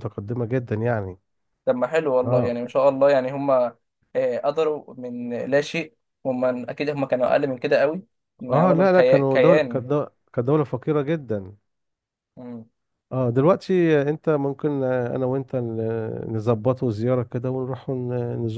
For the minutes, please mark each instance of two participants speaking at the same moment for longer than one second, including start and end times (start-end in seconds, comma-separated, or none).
8.5-9.8